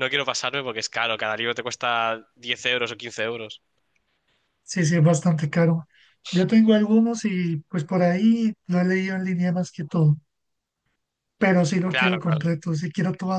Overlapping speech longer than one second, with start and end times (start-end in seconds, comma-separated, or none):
none